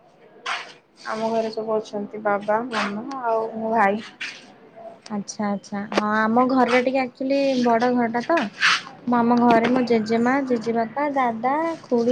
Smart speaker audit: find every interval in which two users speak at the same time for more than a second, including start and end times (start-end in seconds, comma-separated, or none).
none